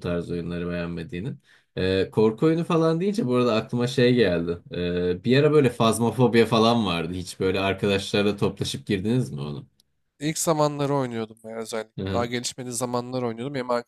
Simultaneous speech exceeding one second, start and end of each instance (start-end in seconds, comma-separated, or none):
none